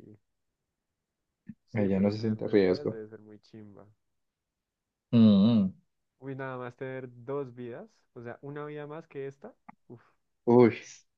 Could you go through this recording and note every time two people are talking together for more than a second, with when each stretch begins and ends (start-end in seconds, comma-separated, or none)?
1.7-3.0